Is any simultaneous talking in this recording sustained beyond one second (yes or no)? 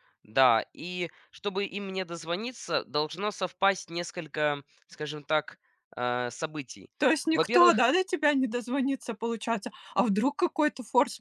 no